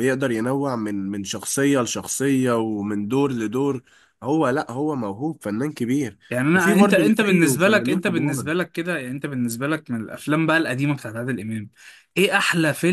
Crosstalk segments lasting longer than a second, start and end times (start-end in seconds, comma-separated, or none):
6.5-8.4